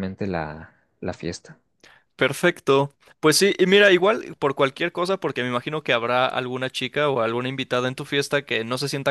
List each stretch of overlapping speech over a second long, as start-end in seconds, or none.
none